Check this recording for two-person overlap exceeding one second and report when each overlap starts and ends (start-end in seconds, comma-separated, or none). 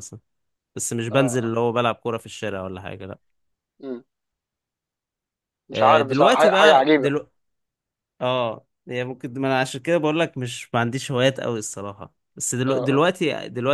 5.7-7.1